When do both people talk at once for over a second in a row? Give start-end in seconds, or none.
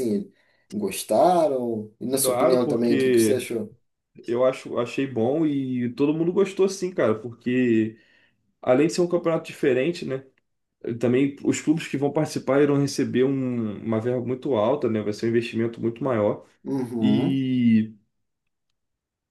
2.2-3.5